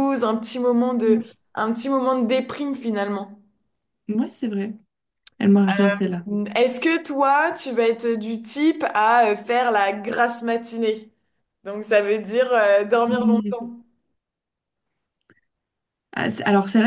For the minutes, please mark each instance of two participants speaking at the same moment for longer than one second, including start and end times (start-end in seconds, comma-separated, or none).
none